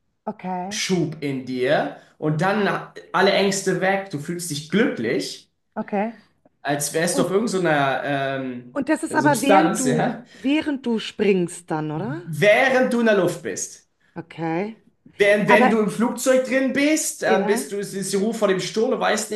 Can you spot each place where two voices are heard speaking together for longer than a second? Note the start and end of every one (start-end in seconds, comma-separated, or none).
8.7-10.2